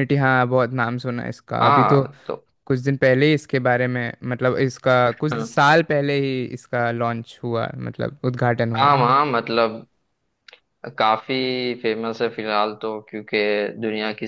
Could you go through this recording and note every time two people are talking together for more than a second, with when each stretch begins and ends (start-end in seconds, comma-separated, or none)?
none